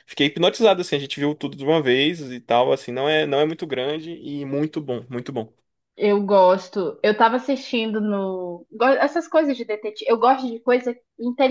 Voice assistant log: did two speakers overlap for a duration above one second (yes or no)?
no